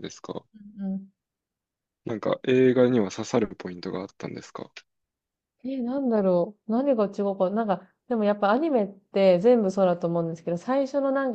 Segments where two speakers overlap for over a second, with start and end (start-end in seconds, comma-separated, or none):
none